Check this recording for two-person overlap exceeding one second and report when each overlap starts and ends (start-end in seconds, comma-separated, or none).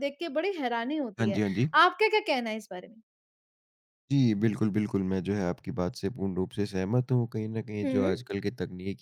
none